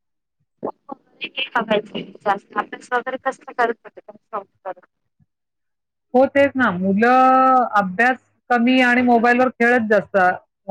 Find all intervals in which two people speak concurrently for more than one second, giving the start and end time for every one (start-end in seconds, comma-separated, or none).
none